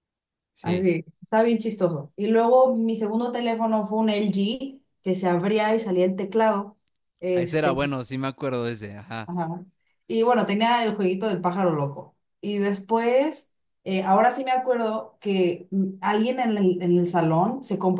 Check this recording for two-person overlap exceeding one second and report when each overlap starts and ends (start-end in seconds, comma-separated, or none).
none